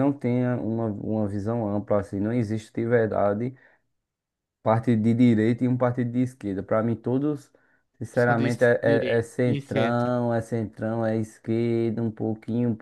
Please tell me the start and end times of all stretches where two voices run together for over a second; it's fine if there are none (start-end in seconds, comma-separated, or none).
8.1-10.1